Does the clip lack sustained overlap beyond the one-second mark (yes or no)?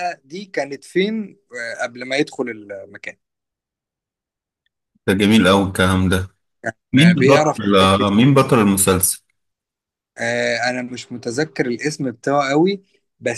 yes